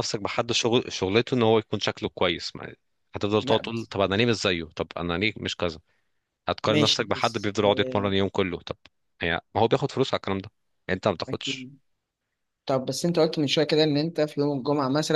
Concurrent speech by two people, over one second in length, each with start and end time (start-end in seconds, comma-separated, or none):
6.7-8.1